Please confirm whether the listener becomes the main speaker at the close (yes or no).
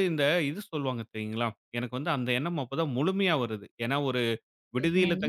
no